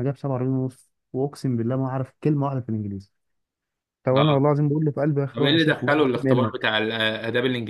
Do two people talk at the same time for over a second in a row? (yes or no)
yes